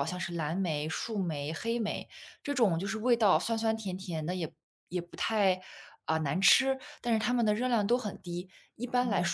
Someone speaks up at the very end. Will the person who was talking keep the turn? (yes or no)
yes